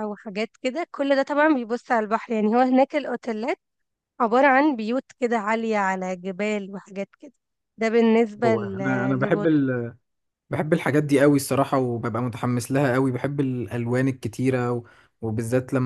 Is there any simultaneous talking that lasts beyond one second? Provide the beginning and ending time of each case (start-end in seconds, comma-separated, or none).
8.4-9.7